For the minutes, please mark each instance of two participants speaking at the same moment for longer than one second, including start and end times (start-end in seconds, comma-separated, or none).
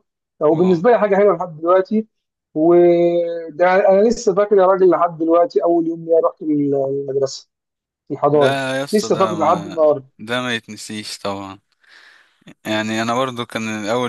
8.3-9.8